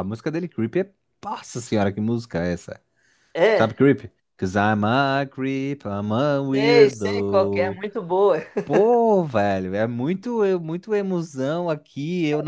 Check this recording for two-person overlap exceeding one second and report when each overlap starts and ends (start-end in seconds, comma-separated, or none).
6.5-7.8